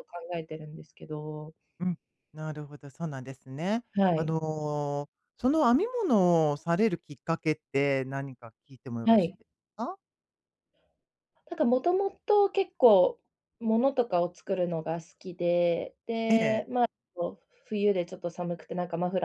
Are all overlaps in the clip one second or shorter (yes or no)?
yes